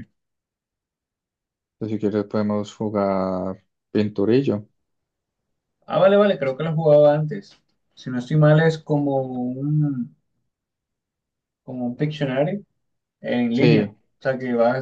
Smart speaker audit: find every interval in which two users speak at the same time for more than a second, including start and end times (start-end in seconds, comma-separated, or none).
none